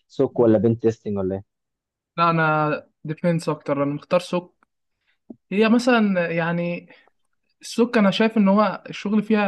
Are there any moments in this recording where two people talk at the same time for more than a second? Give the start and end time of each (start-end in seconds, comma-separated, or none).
none